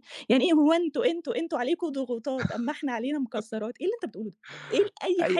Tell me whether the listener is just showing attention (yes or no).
no